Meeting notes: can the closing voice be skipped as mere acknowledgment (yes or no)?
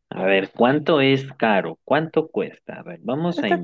yes